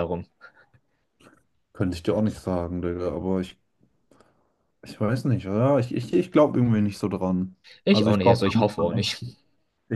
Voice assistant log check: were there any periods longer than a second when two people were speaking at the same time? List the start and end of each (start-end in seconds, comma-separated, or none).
7.8-9.2